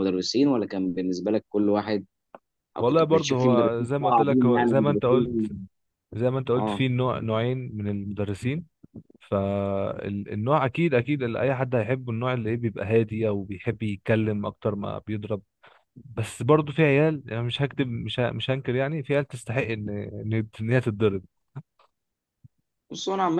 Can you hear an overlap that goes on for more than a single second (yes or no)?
yes